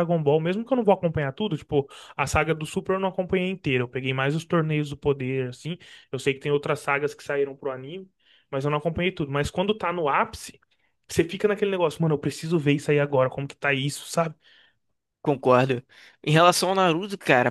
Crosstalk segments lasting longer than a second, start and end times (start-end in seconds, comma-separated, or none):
none